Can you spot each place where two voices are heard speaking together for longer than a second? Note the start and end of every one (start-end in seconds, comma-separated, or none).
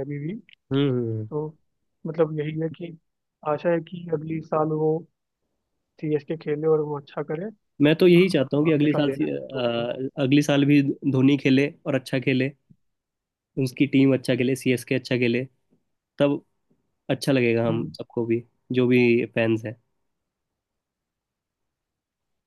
8.0-9.7